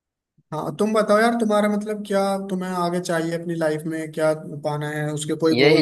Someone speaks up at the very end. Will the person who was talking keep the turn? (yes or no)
no